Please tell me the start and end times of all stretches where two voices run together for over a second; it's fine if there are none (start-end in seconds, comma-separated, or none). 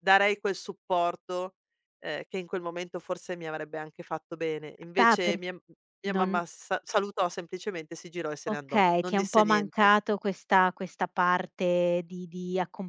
8.5-9.9